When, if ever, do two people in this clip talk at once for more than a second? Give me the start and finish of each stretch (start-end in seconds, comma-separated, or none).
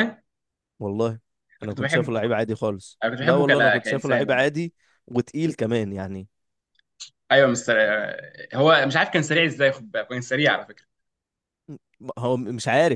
3.0-4.5